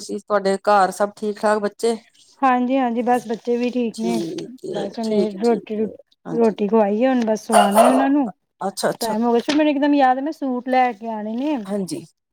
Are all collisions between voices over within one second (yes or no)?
no